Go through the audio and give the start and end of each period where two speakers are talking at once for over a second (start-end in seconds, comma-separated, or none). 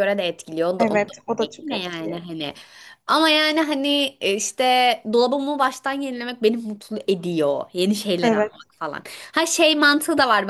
0.8-2.2